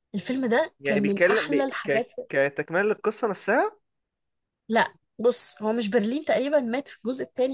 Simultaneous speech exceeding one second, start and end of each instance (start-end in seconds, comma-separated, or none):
0.8-2.1